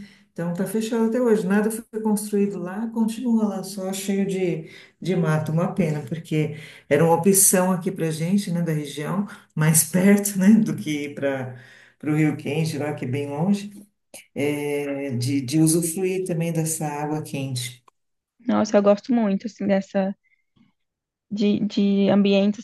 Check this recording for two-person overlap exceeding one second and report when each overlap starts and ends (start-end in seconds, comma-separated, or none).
none